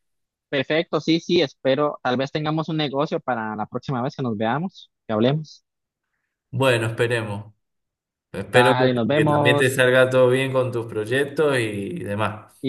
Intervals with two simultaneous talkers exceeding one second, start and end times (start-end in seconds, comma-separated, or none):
8.5-9.8